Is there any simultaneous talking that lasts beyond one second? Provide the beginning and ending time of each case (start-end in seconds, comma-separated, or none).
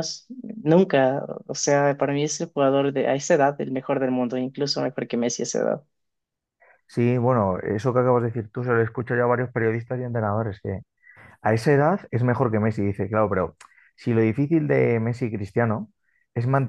none